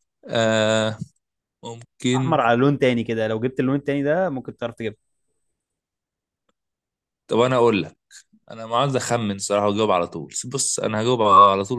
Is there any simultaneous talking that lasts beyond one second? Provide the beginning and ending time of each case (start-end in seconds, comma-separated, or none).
none